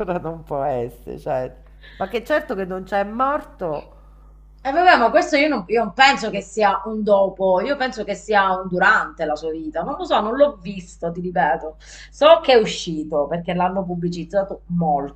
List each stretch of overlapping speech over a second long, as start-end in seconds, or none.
none